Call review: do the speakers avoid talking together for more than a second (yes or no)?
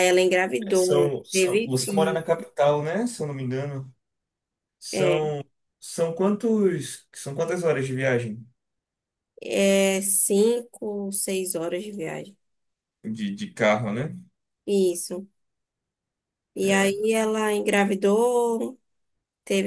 no